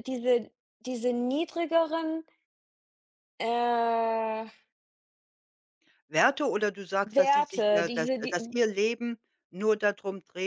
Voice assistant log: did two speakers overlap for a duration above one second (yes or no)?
yes